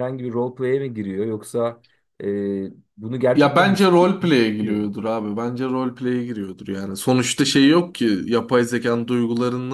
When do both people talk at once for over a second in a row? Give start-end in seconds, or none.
3.3-4.9